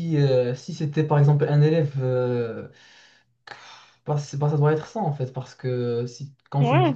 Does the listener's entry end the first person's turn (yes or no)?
no